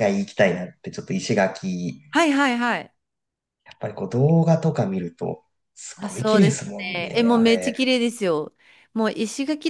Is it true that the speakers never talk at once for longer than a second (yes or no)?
no